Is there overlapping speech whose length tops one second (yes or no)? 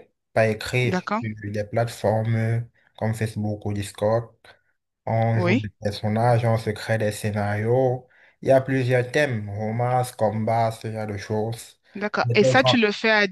no